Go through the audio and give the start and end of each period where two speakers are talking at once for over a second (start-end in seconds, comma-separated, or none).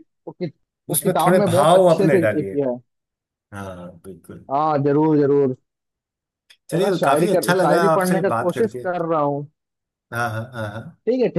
0.9-2.6, 6.8-8.9